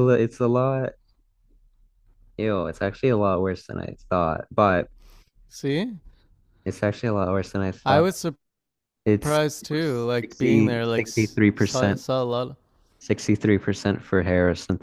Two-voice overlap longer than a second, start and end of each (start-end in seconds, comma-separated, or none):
10.2-12.0